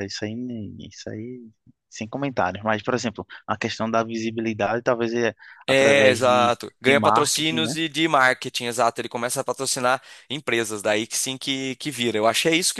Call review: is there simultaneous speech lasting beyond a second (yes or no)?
yes